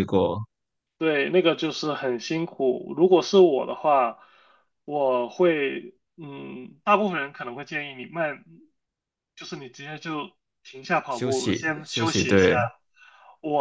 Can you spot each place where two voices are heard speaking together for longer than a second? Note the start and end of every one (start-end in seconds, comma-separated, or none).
11.1-12.5